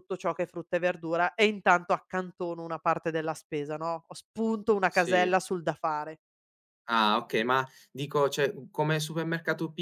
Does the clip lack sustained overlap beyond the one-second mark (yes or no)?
yes